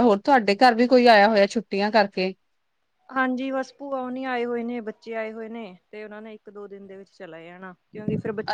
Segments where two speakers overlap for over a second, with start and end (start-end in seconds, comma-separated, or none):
none